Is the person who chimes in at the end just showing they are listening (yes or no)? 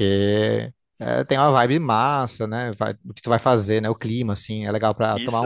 yes